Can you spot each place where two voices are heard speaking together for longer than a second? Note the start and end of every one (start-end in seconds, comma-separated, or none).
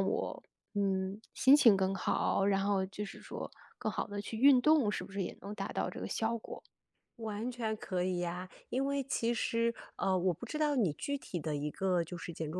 none